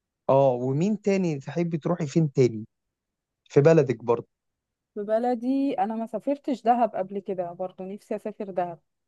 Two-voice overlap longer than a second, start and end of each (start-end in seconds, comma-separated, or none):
none